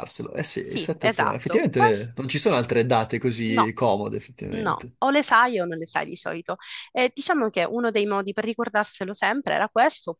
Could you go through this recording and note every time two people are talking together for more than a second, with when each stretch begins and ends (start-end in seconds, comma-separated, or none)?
0.7-2.1